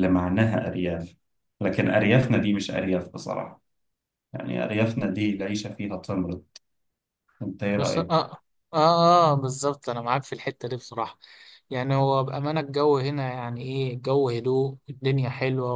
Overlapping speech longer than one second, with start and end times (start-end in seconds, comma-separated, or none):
none